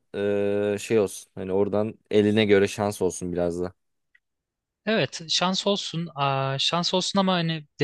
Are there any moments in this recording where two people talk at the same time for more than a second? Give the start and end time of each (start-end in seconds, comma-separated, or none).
none